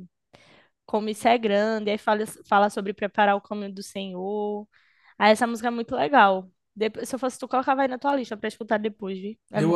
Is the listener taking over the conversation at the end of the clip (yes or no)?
yes